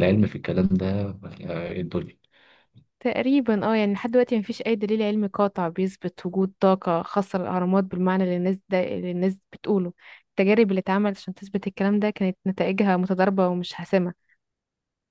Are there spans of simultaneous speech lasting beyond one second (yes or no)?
no